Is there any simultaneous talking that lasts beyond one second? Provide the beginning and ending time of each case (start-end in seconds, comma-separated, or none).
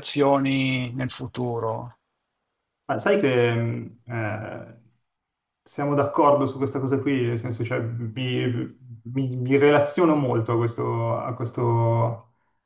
none